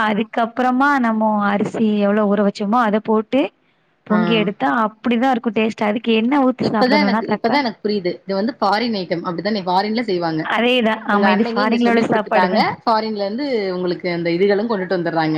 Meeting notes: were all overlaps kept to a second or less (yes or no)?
no